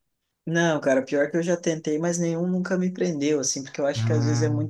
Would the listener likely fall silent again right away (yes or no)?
yes